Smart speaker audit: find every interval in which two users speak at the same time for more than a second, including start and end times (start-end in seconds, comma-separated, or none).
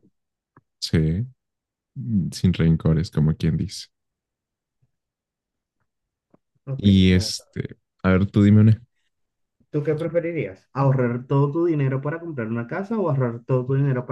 none